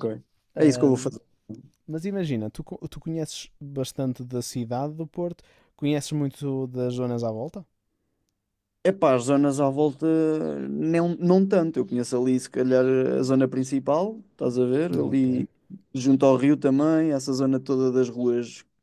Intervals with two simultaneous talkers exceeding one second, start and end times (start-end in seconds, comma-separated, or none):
none